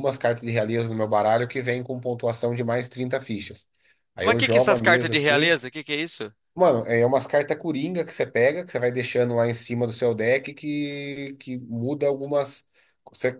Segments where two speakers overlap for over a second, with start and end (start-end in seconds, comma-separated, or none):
4.2-5.6